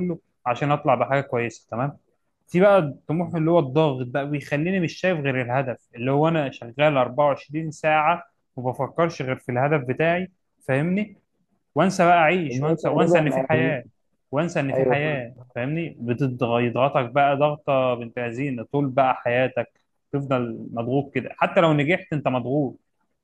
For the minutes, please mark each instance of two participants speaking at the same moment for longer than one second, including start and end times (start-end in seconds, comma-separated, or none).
12.5-13.8